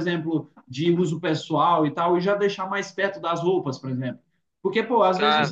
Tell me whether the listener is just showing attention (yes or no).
yes